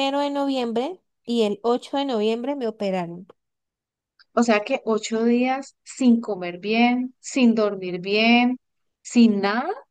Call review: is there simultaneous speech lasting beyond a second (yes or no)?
no